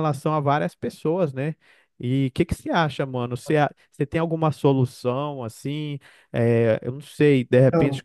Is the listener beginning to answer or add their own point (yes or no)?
no